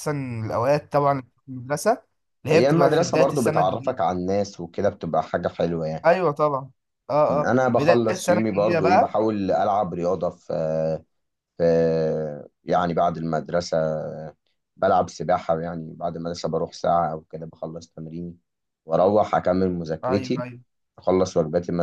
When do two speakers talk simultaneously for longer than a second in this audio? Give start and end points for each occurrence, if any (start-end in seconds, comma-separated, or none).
2.5-4.0, 7.3-9.2